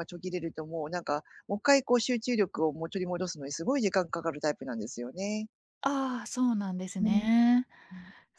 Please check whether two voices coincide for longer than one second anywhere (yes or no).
no